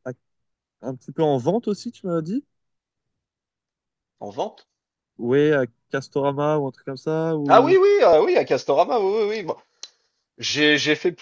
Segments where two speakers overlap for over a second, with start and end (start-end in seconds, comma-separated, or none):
none